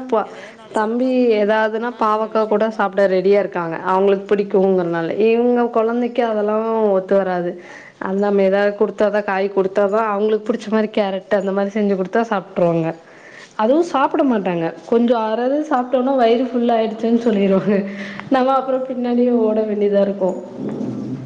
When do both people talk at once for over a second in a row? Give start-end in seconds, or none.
0.8-3.7